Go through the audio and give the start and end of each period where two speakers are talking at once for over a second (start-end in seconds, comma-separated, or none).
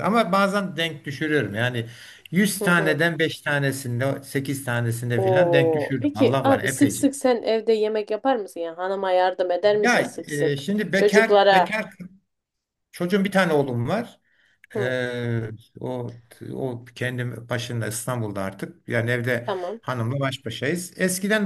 5.2-7.0, 9.8-11.7